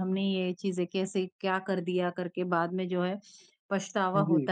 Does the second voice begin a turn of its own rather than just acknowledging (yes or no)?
no